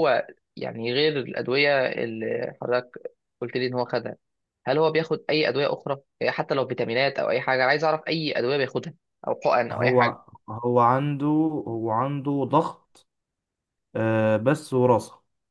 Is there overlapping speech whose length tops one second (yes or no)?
no